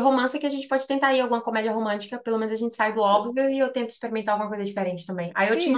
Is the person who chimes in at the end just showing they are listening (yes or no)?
no